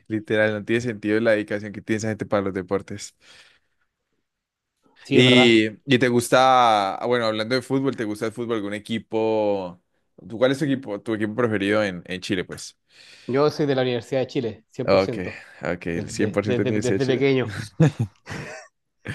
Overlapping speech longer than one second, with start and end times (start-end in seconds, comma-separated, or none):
15.9-17.2